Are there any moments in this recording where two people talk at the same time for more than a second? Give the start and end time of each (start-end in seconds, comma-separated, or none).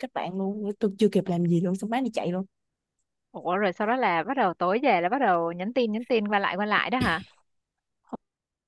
none